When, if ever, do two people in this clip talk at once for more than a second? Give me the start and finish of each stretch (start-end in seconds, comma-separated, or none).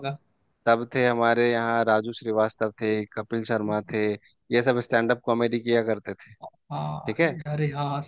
none